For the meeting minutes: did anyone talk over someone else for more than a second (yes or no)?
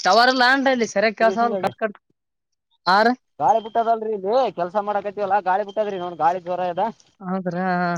no